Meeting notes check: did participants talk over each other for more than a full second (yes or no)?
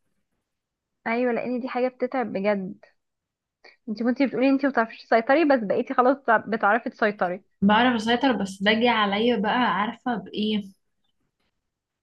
no